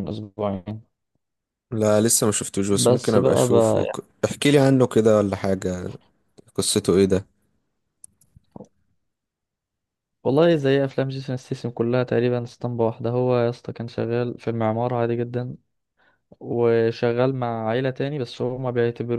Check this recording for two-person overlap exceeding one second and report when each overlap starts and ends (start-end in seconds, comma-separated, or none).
2.7-4.1